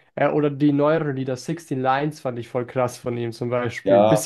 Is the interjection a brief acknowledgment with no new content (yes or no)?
yes